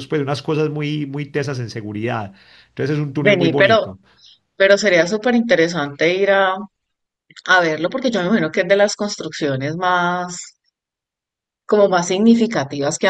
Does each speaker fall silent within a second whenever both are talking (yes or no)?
yes